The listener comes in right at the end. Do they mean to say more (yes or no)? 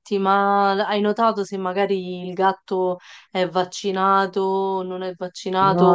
yes